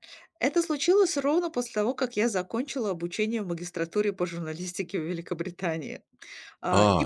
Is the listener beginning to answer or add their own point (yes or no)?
yes